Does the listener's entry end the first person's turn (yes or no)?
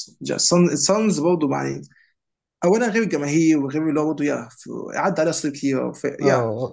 yes